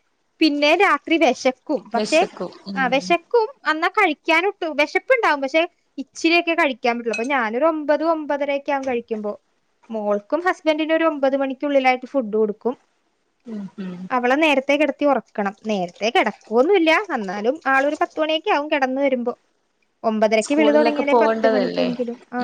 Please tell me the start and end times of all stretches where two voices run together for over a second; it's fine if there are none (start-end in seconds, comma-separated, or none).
20.4-21.9